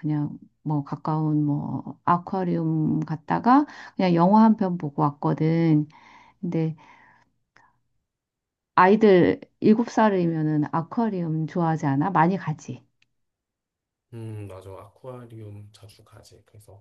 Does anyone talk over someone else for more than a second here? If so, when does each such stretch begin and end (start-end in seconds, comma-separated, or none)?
none